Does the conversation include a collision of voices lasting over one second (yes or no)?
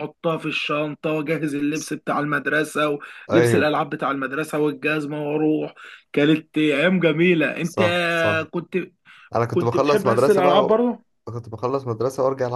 yes